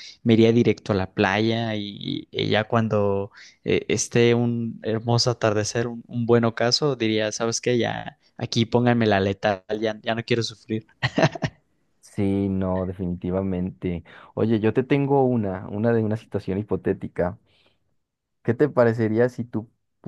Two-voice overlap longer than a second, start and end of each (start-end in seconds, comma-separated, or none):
none